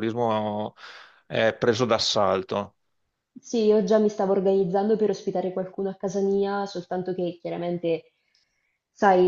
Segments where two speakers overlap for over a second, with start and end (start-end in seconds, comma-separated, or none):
none